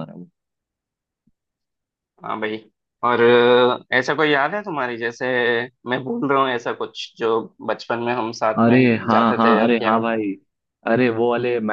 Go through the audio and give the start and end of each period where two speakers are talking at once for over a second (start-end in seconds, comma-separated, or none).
8.6-10.2